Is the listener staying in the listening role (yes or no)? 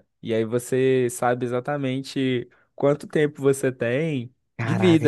no